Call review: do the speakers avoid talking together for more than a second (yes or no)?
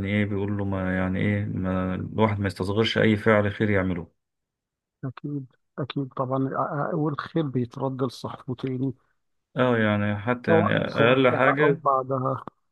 no